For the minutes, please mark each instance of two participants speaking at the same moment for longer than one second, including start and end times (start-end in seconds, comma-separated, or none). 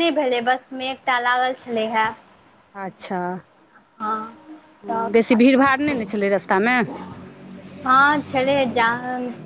none